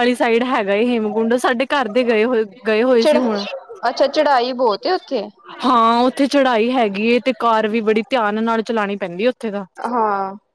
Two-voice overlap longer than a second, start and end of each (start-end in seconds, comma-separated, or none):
none